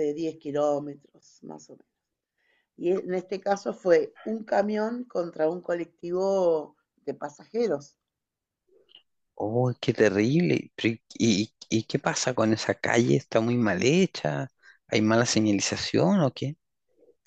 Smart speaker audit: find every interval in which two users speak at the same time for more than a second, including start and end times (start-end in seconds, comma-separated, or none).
none